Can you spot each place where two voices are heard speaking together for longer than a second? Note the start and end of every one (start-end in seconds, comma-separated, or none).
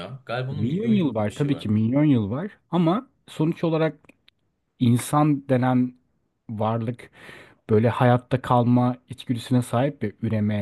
0.5-1.7